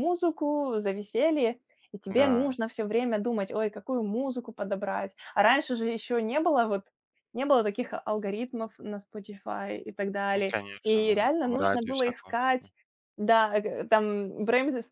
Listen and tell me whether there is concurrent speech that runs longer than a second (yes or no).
yes